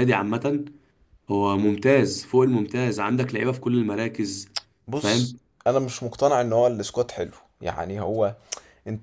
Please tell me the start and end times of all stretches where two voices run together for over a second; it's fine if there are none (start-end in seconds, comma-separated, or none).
none